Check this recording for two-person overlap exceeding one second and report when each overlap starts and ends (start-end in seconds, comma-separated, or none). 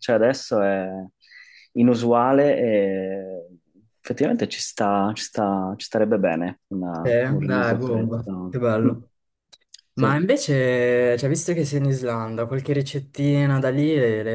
7.0-8.9